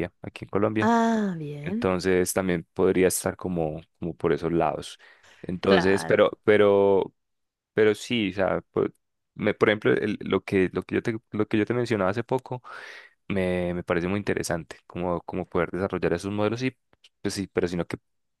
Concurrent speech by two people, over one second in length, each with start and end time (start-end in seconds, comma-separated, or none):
none